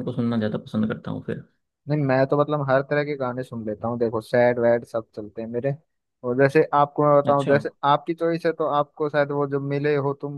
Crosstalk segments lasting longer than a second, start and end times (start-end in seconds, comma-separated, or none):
none